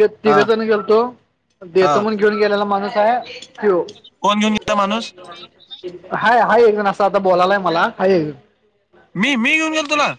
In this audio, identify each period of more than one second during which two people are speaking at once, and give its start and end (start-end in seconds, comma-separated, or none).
none